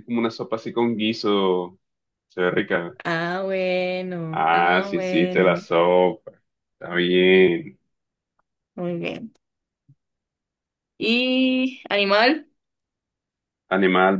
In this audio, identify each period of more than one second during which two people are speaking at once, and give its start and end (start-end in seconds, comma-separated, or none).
4.3-5.7